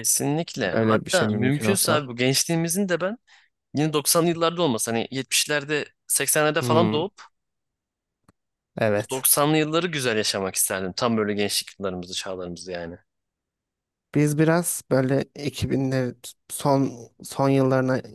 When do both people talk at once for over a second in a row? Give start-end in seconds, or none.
0.7-2.0